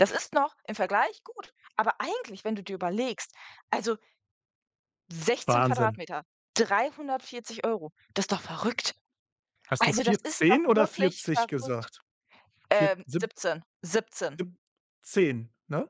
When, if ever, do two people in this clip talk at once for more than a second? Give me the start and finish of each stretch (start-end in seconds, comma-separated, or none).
9.8-11.8